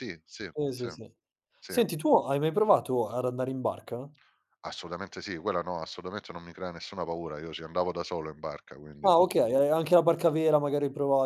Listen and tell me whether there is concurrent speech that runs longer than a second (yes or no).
no